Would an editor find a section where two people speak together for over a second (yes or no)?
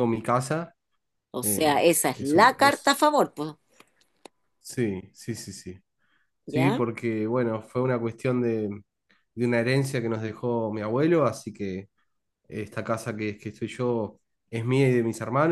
yes